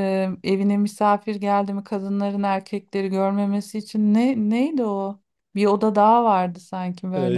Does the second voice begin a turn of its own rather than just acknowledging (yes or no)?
yes